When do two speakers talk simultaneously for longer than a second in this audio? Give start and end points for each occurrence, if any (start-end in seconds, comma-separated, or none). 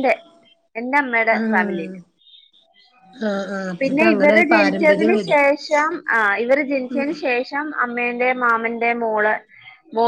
3.8-5.4